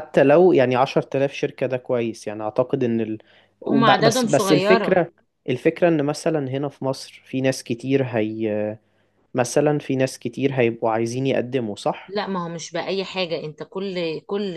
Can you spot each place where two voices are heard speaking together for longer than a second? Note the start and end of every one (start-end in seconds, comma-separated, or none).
3.7-5.0